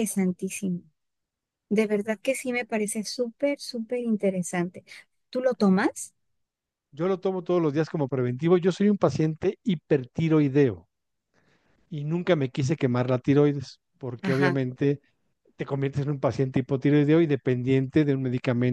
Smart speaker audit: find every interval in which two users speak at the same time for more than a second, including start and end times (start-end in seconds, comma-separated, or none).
none